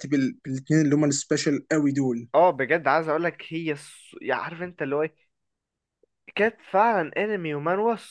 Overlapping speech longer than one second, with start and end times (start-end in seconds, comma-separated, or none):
none